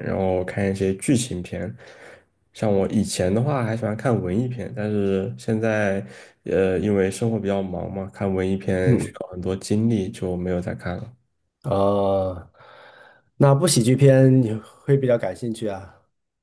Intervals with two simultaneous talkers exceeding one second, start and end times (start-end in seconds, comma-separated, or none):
none